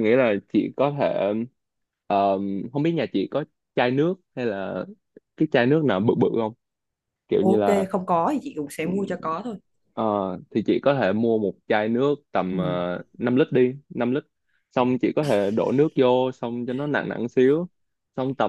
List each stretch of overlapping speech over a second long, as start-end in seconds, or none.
none